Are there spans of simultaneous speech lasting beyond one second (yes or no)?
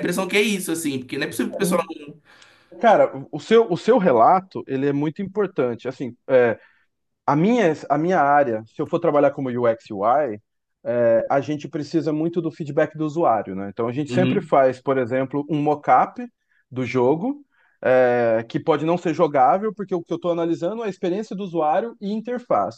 no